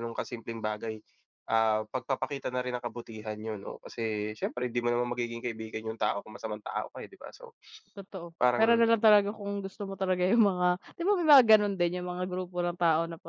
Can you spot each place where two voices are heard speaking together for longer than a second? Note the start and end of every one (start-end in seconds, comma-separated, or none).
none